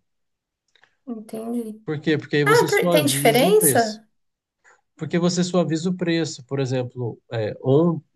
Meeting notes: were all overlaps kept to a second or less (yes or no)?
no